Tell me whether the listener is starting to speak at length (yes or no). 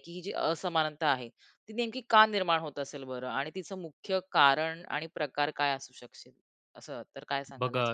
yes